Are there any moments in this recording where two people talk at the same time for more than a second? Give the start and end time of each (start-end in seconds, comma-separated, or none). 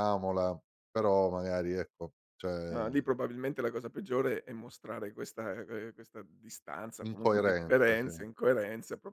7.0-8.3